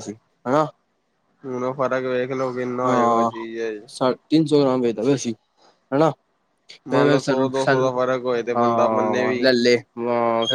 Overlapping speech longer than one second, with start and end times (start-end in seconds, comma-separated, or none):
none